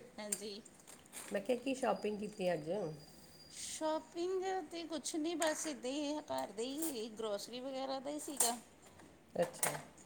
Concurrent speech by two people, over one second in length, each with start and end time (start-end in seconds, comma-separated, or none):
none